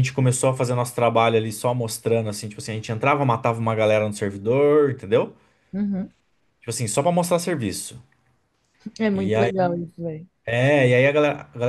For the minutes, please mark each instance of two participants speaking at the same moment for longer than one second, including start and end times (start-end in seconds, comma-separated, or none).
none